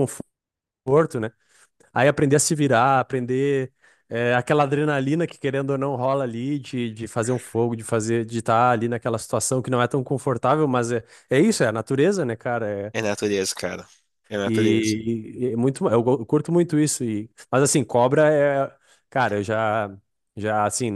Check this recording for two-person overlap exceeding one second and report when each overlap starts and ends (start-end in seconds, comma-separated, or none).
none